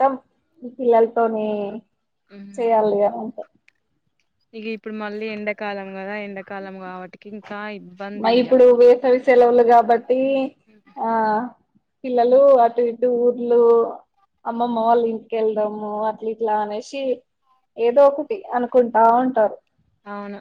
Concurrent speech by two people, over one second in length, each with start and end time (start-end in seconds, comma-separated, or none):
none